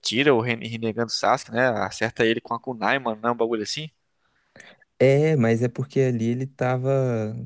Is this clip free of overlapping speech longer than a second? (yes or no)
yes